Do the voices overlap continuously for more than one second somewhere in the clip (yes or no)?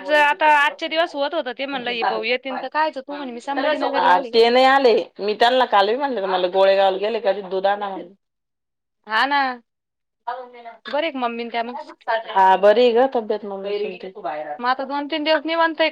no